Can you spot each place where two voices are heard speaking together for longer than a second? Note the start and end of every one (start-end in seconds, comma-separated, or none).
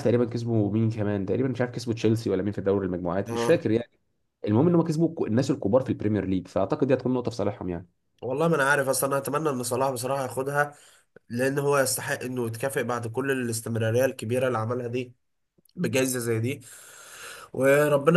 none